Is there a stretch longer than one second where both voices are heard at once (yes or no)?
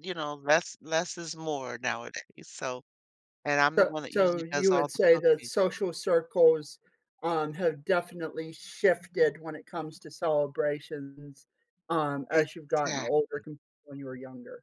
yes